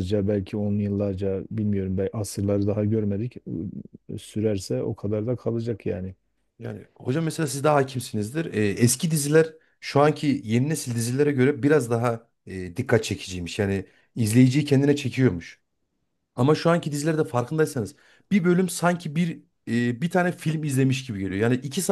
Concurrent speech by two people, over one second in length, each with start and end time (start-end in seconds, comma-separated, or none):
none